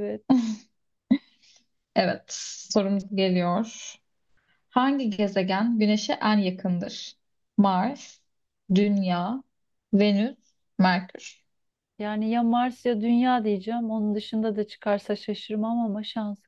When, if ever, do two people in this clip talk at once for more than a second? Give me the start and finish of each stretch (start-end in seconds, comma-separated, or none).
none